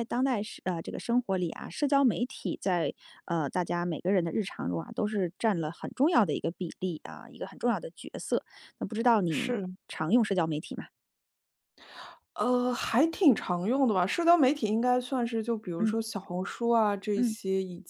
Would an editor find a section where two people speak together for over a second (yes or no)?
no